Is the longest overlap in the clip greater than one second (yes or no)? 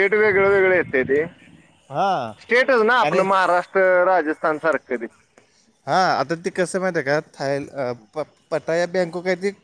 no